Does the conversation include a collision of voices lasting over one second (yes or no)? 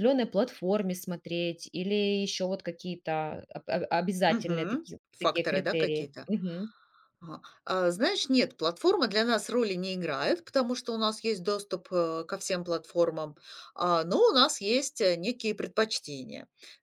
yes